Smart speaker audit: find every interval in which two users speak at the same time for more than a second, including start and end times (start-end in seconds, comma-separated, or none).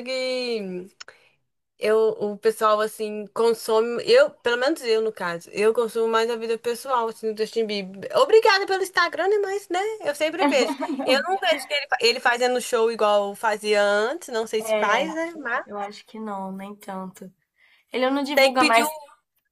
none